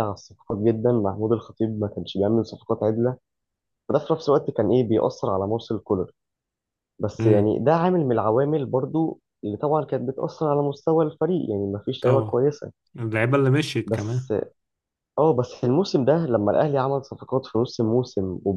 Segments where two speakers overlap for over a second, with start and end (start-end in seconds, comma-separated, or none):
none